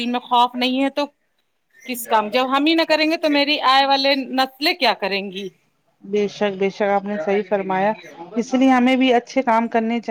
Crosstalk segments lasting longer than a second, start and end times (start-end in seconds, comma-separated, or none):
none